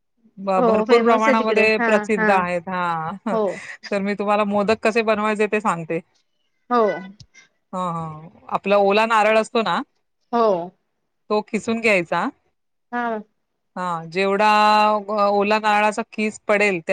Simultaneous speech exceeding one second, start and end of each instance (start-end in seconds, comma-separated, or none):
0.6-2.3